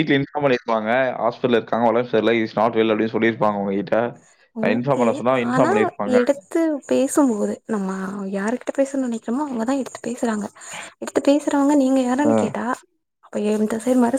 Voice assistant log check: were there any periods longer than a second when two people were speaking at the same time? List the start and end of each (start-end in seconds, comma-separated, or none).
none